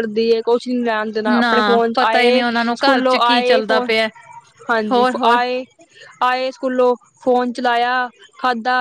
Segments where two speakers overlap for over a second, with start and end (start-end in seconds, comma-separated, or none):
1.4-3.9